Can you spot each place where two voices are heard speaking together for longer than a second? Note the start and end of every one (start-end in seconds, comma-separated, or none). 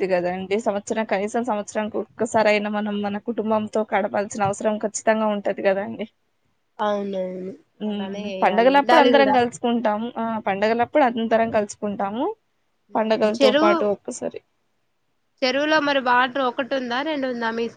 7.9-9.3